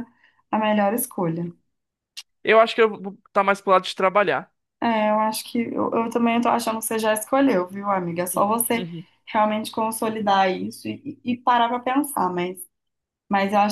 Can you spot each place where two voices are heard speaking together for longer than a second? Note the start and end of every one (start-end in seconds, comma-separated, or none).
none